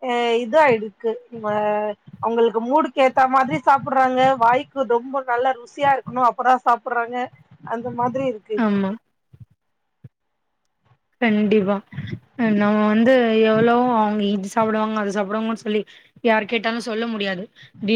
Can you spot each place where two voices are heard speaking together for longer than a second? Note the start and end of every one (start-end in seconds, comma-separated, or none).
none